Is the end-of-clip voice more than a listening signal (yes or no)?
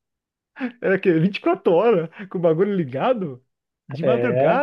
no